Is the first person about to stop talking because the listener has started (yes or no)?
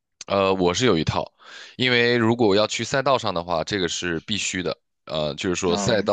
no